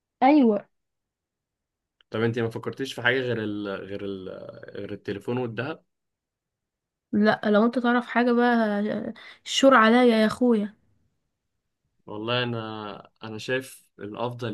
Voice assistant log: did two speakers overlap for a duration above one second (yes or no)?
no